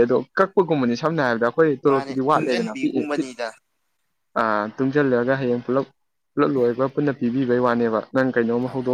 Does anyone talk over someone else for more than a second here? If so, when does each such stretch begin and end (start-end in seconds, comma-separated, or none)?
1.9-3.3